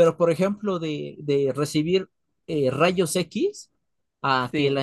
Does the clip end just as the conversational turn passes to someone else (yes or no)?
no